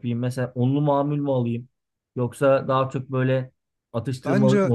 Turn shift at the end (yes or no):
no